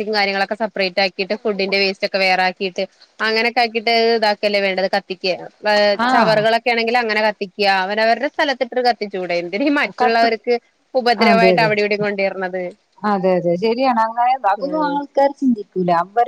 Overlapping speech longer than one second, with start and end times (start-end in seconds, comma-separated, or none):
none